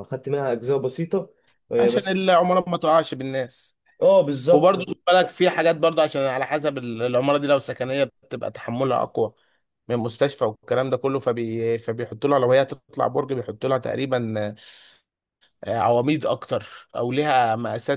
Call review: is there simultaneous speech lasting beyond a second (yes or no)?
no